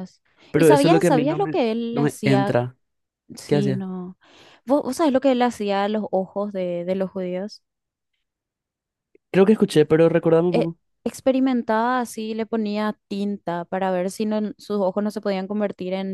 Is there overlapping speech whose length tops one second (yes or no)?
yes